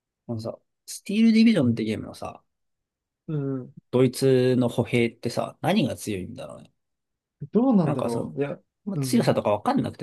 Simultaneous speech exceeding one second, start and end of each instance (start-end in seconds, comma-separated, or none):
none